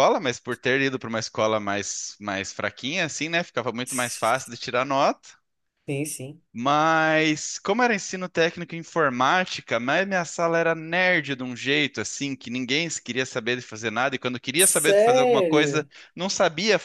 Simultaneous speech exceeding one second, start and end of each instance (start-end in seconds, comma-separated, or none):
14.6-15.9